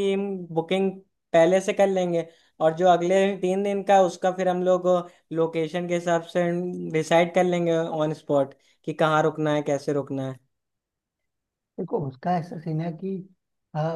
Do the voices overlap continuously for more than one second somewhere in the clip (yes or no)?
no